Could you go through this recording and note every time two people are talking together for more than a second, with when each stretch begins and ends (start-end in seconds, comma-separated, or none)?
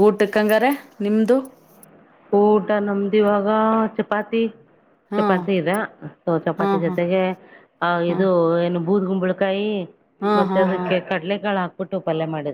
none